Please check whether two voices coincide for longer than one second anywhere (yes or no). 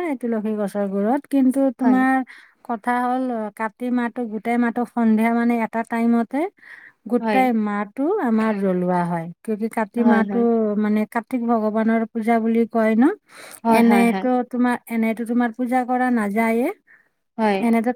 no